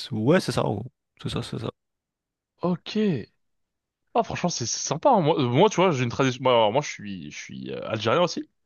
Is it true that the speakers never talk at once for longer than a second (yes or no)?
yes